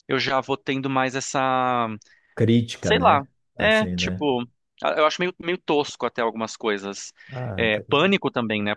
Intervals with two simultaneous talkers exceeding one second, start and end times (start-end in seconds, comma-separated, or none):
2.8-4.3